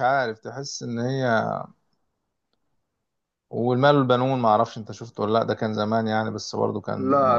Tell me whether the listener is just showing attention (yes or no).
no